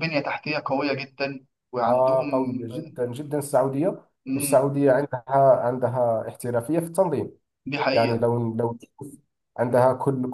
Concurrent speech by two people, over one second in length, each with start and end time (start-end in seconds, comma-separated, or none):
none